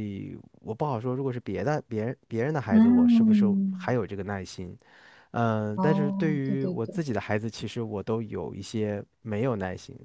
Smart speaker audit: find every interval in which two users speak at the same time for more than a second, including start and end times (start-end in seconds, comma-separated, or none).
2.7-4.0, 5.8-7.0